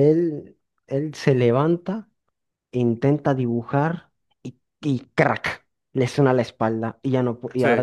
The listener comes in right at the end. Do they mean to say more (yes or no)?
no